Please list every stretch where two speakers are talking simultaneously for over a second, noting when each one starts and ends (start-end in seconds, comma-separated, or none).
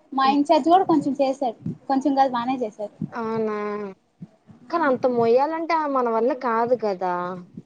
none